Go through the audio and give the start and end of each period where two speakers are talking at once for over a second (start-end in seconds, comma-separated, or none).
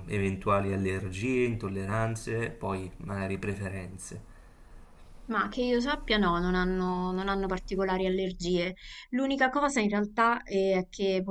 none